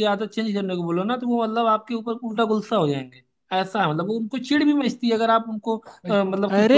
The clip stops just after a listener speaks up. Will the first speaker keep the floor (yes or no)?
no